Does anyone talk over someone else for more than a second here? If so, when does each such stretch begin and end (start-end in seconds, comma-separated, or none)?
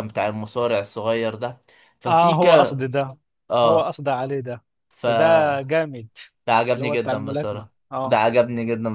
6.7-8.2